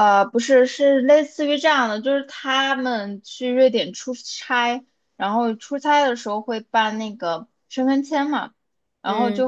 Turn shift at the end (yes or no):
no